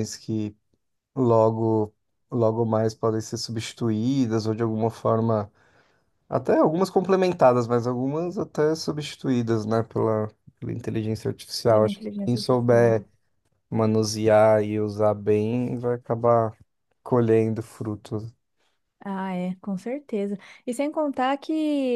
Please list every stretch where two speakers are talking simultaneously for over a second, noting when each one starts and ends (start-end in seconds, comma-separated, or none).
11.7-13.0